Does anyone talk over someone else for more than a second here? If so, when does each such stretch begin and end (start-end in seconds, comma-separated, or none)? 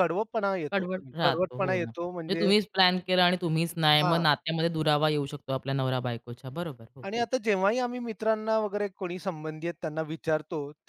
0.7-2.5